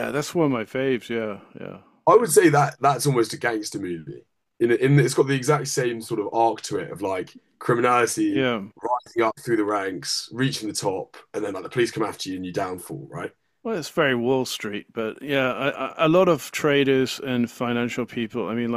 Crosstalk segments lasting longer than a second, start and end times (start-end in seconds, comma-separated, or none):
none